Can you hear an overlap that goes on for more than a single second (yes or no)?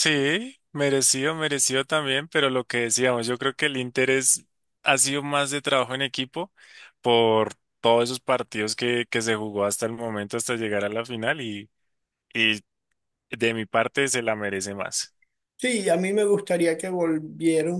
no